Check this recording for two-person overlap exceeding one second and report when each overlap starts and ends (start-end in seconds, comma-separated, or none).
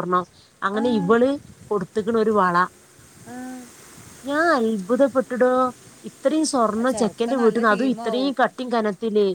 6.9-8.3